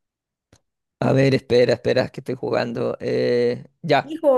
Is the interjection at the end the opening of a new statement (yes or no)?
yes